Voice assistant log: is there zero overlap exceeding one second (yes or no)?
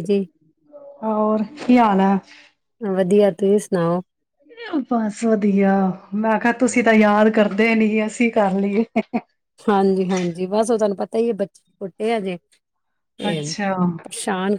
yes